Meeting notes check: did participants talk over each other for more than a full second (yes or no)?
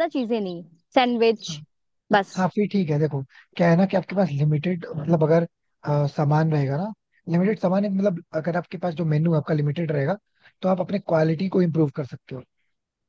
no